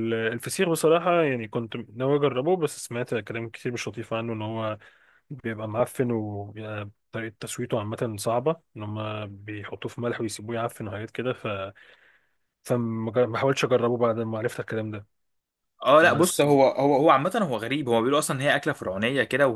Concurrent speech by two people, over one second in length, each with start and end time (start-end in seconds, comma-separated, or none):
none